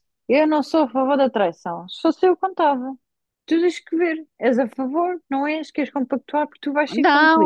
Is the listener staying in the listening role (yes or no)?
no